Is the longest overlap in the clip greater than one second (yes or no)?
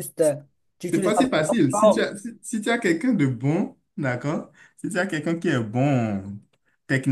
yes